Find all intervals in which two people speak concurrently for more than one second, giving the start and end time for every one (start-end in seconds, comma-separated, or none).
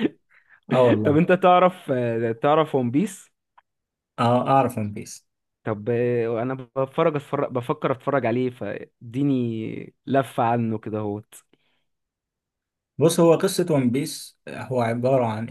none